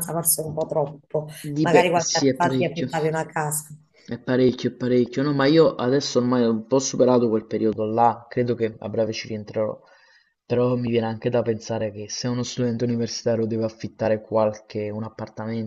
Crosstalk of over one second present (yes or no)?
yes